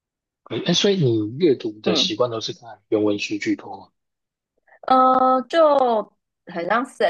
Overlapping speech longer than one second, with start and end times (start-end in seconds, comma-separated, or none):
none